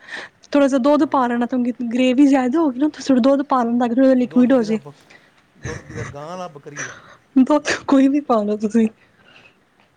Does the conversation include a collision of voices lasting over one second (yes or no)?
no